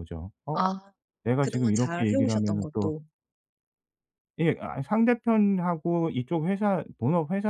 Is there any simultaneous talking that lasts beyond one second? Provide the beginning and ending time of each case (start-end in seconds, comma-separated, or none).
1.4-2.9